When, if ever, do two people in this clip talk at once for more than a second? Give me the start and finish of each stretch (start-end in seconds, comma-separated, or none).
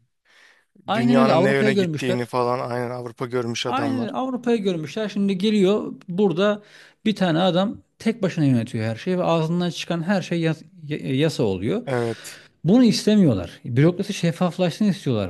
0.9-2.3